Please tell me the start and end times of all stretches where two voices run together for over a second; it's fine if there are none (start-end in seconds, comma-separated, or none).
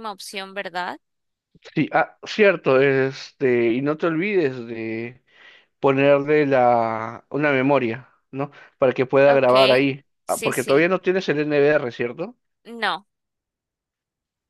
9.3-10.9